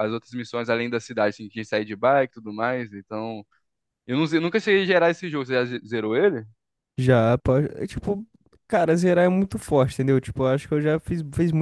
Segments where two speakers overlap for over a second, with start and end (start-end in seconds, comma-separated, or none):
none